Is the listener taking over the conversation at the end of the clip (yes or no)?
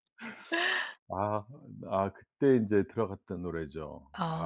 yes